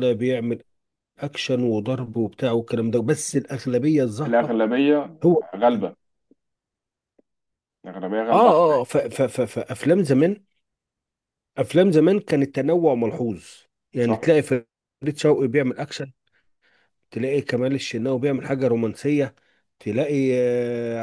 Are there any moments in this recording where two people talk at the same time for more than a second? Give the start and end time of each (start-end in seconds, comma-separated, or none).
none